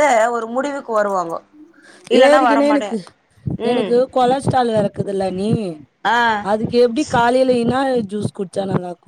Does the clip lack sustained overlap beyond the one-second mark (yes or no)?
yes